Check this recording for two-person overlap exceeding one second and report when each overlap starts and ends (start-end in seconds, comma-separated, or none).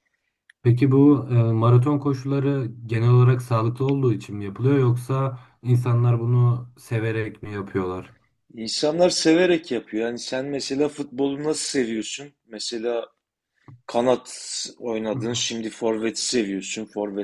none